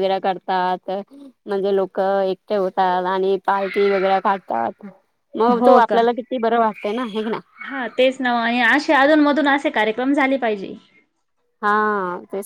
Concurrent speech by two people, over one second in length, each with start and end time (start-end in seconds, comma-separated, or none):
none